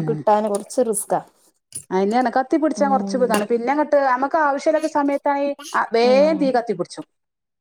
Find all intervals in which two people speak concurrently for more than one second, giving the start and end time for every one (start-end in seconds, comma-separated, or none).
none